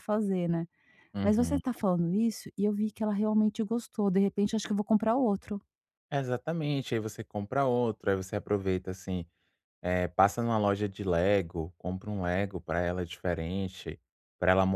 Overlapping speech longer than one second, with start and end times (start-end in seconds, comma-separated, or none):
none